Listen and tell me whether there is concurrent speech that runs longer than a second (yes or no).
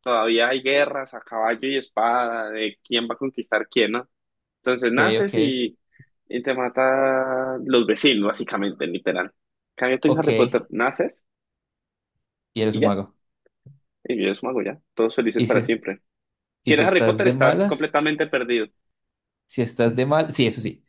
yes